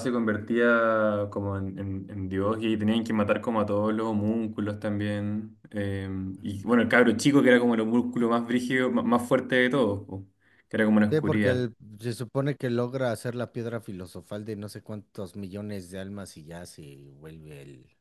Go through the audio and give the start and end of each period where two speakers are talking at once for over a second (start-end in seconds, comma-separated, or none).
none